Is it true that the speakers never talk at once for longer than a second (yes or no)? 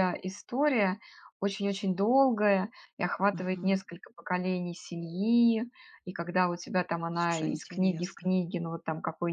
no